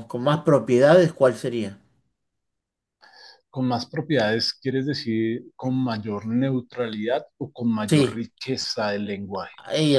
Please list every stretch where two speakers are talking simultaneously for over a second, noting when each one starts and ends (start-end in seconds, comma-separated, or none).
none